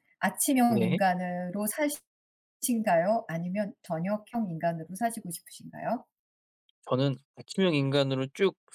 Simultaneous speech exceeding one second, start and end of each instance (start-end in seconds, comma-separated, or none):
none